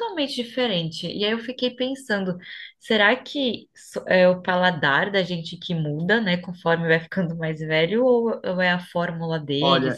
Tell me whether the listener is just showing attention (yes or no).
no